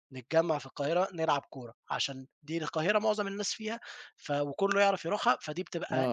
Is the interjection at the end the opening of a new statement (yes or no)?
yes